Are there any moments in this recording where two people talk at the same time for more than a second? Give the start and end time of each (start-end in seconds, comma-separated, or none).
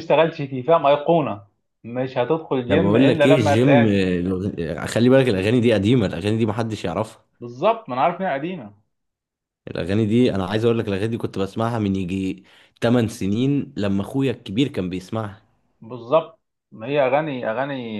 2.7-4.0